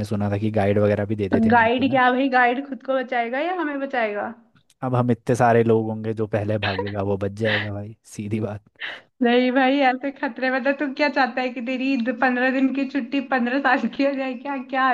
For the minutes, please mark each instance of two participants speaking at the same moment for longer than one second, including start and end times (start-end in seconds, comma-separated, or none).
none